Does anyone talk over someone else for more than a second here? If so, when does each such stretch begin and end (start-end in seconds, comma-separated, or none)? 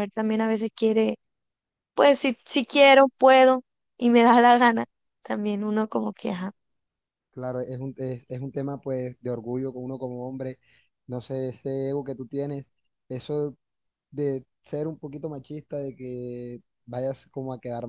none